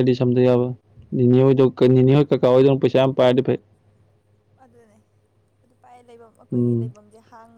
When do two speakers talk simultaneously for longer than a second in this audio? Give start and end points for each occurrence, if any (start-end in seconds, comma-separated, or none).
none